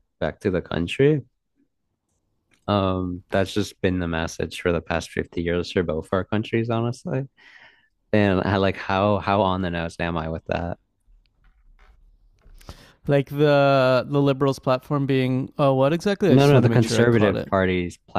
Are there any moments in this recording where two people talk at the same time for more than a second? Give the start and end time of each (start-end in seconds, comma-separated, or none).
16.3-17.5